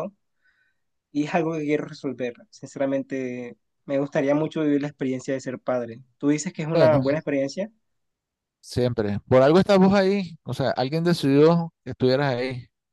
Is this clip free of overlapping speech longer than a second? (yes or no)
yes